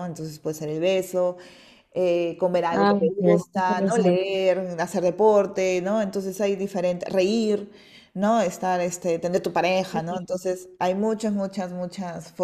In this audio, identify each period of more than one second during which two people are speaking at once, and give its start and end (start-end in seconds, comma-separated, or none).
2.7-4.2